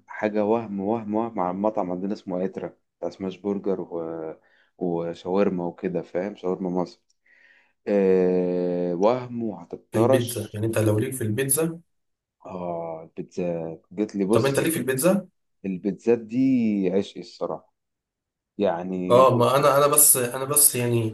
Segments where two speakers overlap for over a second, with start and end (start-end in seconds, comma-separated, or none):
none